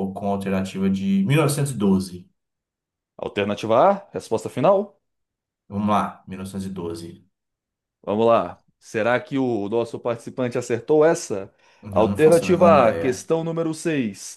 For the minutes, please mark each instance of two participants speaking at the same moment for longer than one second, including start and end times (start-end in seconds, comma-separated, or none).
11.9-13.3